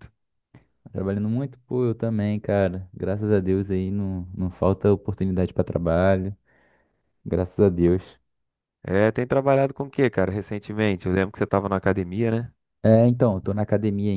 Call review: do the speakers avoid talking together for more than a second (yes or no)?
yes